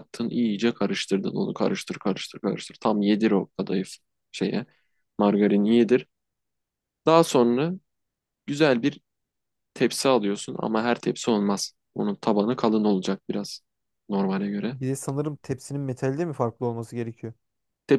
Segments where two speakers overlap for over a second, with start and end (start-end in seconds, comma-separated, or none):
none